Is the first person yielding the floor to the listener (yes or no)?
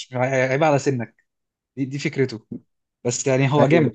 yes